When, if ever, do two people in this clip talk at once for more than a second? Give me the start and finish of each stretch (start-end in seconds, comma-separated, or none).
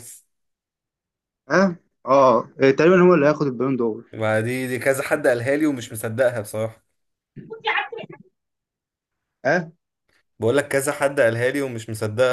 none